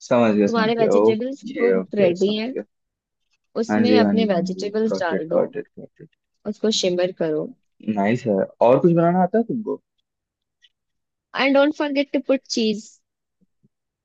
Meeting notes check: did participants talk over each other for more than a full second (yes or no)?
yes